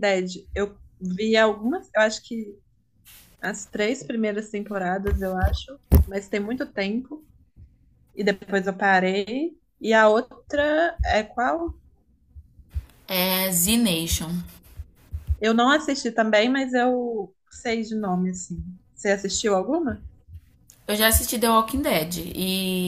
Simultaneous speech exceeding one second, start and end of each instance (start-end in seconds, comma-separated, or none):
none